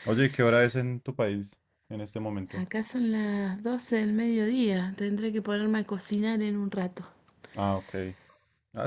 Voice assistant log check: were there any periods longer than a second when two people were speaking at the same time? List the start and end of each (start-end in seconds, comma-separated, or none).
none